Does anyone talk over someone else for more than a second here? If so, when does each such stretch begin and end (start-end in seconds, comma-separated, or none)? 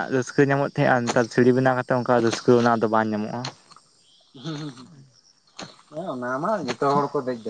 none